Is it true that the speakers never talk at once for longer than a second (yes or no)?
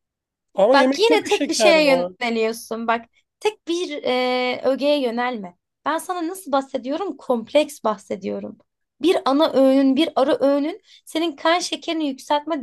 no